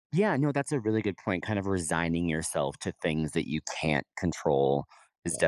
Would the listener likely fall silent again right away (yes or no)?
yes